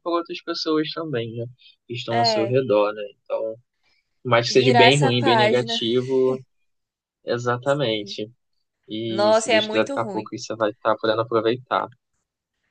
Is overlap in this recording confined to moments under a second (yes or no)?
no